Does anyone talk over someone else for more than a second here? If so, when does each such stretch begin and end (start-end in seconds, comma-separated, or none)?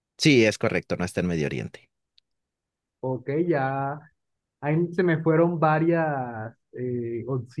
none